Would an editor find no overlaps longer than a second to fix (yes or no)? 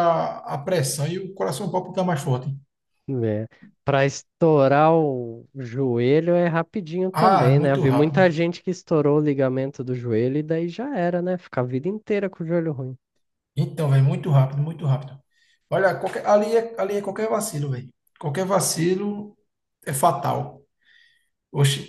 no